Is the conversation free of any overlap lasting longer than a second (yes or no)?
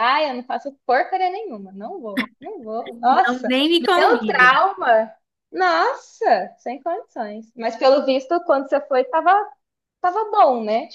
no